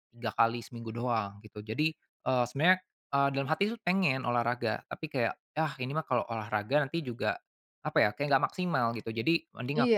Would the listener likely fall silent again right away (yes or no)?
no